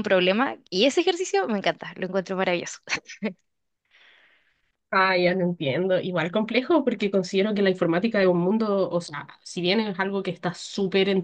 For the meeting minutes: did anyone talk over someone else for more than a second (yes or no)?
no